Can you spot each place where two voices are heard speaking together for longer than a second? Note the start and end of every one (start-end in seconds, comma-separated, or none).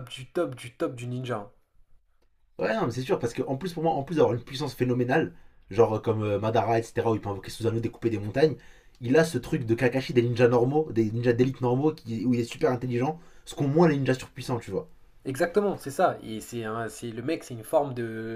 none